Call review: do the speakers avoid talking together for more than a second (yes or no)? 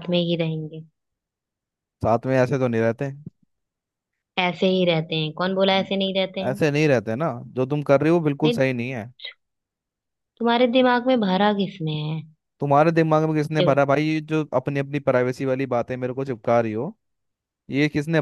yes